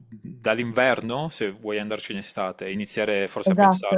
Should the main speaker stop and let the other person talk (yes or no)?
yes